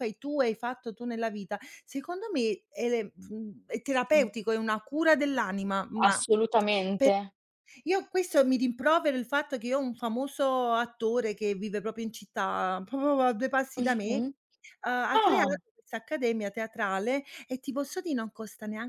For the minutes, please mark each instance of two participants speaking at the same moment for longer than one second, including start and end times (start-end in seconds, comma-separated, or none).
none